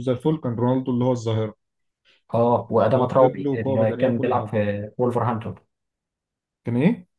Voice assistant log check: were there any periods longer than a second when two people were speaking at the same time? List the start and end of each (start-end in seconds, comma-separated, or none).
2.8-4.5